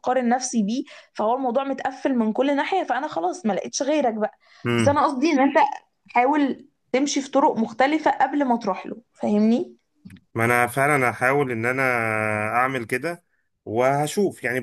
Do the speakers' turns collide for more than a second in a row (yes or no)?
no